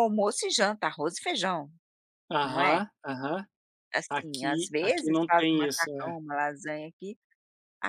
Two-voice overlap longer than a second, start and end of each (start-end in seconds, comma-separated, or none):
4.1-6.2